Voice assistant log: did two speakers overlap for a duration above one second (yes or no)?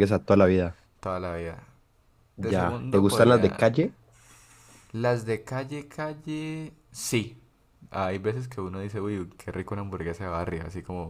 yes